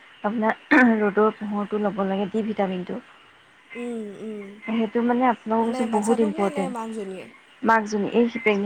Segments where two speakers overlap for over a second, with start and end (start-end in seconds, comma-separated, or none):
5.6-7.2